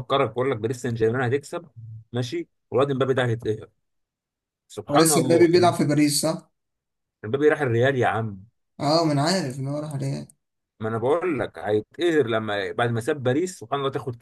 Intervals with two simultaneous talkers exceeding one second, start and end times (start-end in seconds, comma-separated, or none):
none